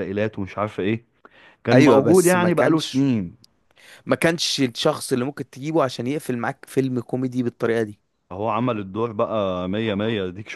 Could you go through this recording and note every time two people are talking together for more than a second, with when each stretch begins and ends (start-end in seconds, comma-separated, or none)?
1.7-3.0